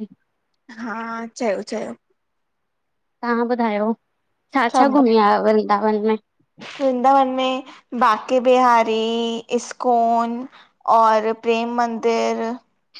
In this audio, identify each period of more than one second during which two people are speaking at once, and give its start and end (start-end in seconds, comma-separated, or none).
none